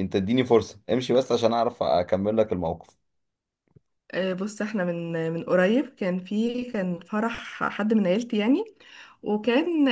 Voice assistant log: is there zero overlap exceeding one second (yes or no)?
yes